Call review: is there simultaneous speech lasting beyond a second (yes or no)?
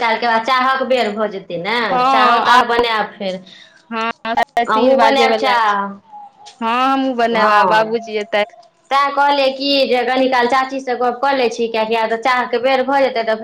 no